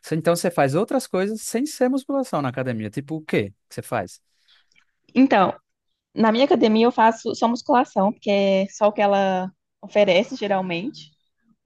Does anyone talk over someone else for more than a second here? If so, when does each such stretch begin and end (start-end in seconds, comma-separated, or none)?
none